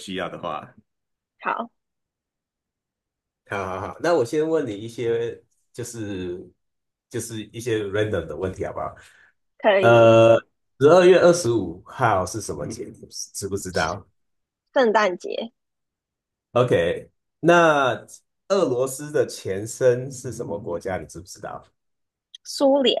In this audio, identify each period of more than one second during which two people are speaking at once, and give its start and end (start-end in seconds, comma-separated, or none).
none